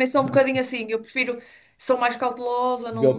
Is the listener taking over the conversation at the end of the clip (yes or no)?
yes